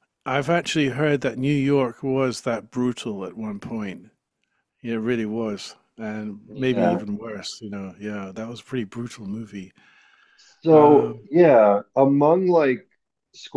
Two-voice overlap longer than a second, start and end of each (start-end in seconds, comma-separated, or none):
none